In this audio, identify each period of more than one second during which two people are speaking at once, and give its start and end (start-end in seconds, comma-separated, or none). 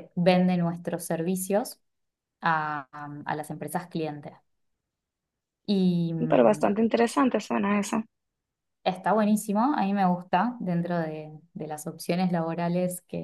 none